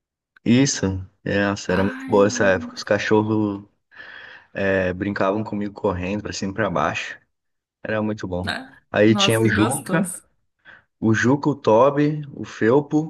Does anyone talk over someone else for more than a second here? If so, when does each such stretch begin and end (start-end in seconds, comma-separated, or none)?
8.4-10.1